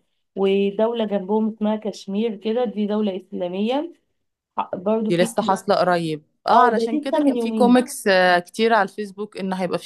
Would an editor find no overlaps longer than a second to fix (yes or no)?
no